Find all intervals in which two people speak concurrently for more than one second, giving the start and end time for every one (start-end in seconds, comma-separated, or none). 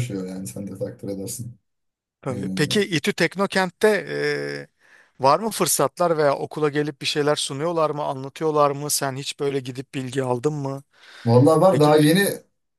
none